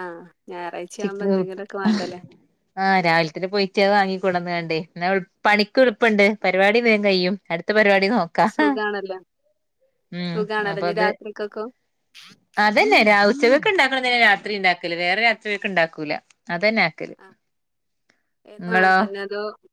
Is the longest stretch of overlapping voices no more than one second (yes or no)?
yes